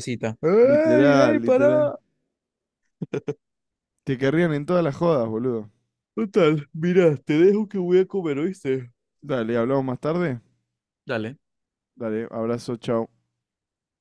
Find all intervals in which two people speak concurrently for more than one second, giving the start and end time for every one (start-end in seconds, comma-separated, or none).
0.6-1.9